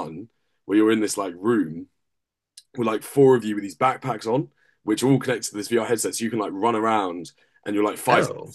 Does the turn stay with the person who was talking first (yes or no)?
yes